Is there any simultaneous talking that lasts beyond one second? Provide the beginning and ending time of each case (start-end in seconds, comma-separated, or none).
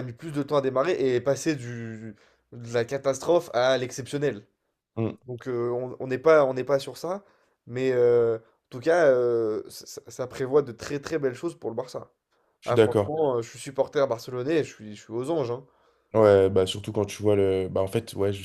none